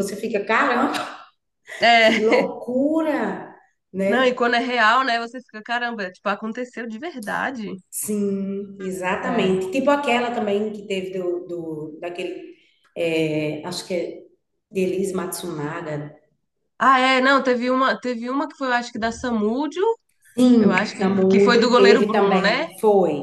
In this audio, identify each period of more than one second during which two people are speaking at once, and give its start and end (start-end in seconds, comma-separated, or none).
20.6-22.7